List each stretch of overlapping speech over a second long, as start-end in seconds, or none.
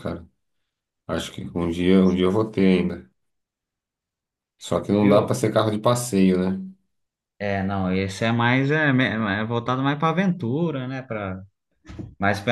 none